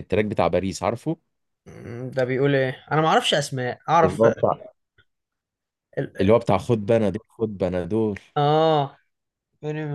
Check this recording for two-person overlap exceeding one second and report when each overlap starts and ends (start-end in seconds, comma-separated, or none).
none